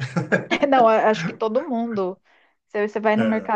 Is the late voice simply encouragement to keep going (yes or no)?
yes